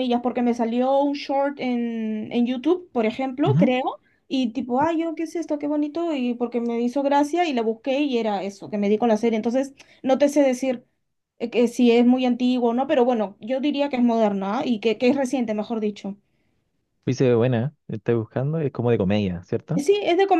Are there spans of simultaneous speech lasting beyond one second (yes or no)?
no